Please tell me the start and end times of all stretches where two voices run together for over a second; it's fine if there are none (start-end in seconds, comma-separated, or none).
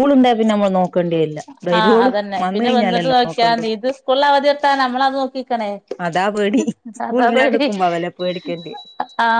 1.8-3.6